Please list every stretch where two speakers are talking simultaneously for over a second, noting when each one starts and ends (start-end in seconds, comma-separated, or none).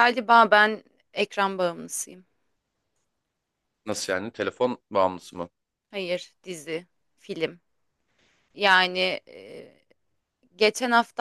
none